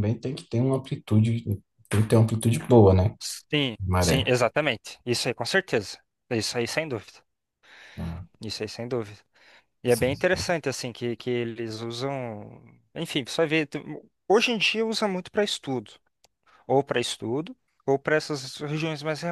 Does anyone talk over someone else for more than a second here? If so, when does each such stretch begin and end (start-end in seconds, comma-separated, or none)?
none